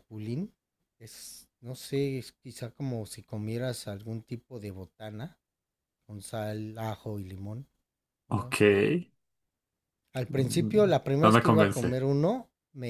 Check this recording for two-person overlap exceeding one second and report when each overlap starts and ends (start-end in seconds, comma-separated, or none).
10.3-12.0